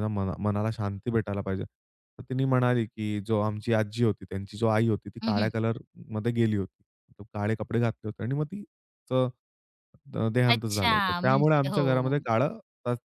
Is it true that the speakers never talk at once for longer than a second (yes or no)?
no